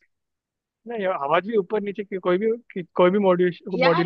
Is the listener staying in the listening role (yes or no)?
no